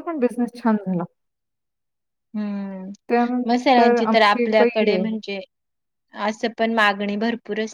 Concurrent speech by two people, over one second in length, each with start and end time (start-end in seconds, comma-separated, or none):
3.5-5.0